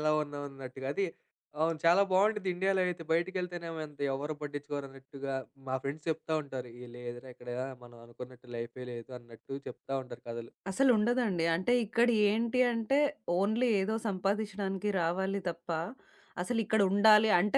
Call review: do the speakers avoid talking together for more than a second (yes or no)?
yes